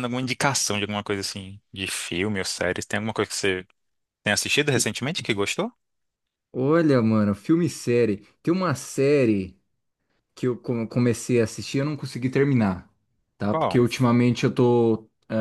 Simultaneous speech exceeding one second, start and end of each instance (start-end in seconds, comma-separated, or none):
none